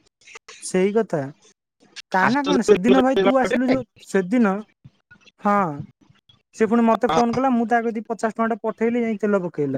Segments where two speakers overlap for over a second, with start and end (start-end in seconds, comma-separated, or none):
2.3-3.8